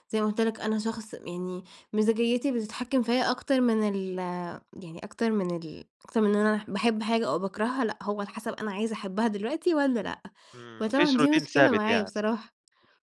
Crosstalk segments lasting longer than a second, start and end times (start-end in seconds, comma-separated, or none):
10.8-12.1